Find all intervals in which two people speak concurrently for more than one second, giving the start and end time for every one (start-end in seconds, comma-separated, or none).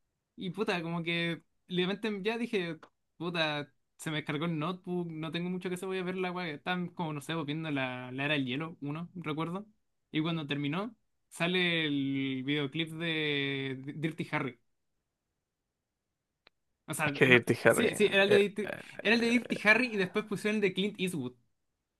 17.0-19.7